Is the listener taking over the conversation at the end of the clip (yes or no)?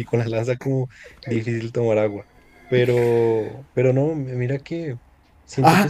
yes